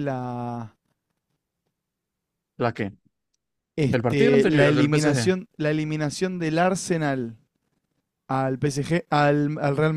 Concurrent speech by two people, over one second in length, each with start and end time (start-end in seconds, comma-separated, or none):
3.9-5.3